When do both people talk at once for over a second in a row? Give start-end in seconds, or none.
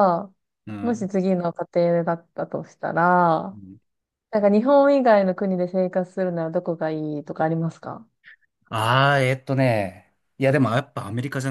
none